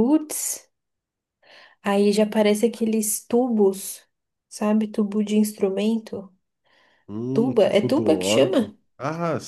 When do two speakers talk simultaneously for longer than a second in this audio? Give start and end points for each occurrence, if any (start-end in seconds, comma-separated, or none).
7.3-8.7